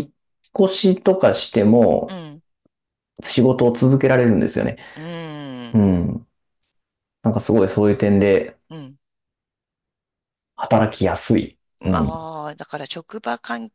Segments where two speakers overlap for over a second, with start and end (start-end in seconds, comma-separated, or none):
none